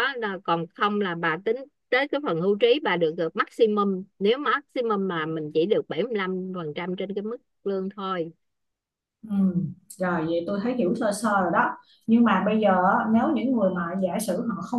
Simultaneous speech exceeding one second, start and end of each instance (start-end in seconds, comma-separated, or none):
none